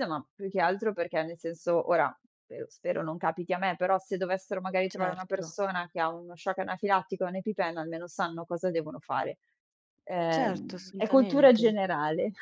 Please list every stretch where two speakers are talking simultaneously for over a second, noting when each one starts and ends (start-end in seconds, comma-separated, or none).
10.3-11.8